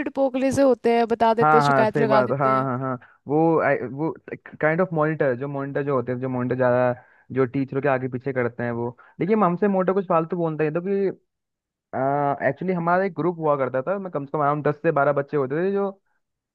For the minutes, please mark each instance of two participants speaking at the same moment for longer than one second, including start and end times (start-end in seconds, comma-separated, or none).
1.4-2.7